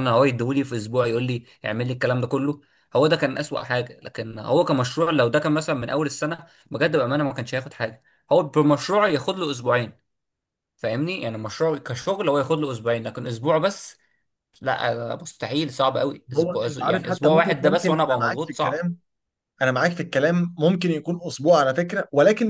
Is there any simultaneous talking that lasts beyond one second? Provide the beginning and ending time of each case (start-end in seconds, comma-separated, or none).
16.4-18.9